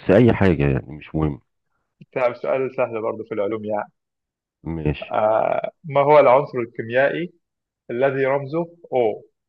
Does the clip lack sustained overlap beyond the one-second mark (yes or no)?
yes